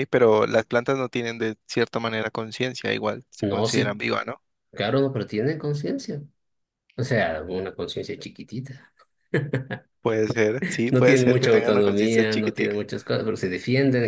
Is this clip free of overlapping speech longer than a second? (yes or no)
no